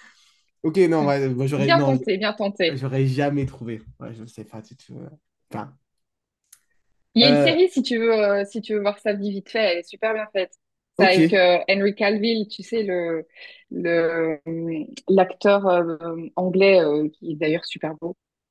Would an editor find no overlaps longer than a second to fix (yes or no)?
yes